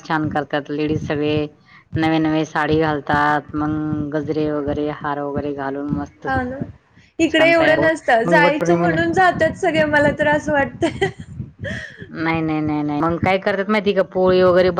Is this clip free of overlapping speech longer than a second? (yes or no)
no